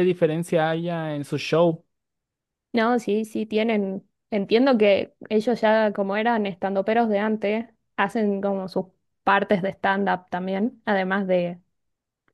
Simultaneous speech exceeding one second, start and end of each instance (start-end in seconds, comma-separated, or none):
none